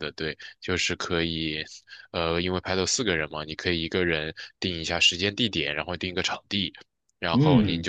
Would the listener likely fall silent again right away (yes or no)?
yes